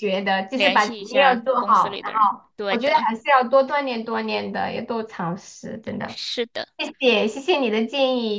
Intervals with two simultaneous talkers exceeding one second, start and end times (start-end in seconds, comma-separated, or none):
0.5-3.1